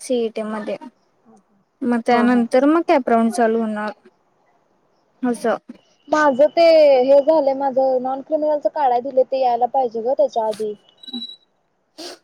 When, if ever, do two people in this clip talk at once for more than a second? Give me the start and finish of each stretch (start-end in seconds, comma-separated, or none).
none